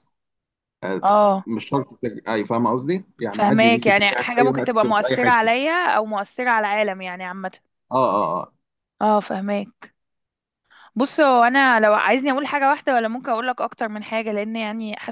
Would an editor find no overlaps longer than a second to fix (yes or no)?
no